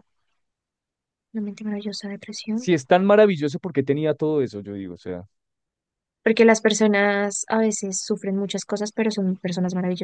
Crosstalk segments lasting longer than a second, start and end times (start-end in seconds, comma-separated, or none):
none